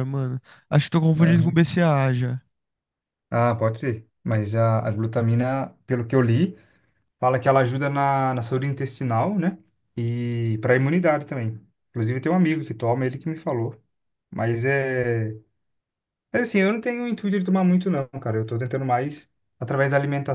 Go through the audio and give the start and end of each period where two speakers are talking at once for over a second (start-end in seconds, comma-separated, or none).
none